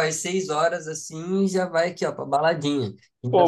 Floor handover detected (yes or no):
yes